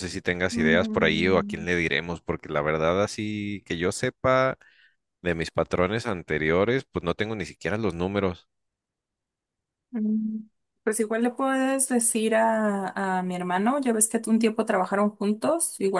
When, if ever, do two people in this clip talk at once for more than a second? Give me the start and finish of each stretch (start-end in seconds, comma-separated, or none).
0.5-1.8